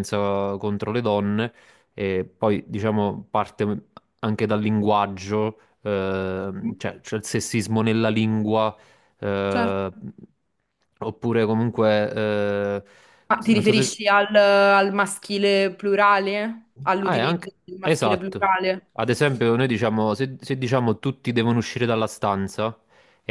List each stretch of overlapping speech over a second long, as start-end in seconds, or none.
17.0-18.5